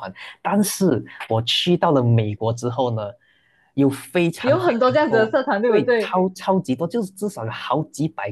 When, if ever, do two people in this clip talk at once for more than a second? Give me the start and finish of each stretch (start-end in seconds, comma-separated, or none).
4.4-6.2